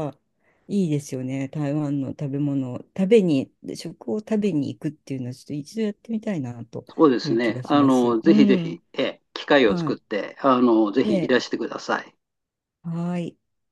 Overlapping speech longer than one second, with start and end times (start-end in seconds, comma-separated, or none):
7.2-8.8